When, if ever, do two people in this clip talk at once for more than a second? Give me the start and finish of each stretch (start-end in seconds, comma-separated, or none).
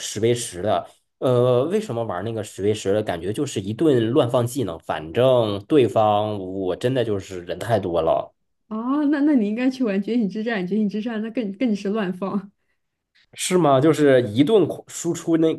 none